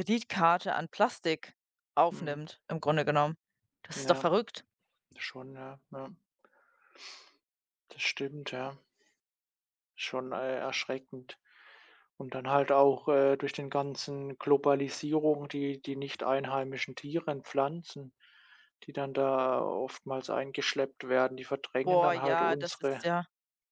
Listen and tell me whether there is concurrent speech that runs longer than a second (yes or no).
yes